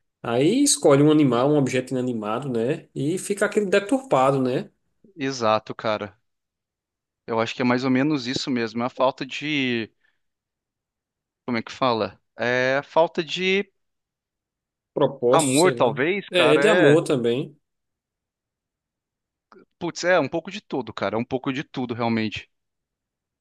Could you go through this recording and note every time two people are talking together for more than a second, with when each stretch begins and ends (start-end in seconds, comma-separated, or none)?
15.3-17.0